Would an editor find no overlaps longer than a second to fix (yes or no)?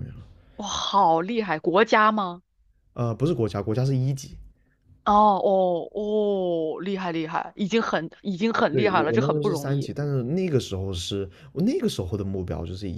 no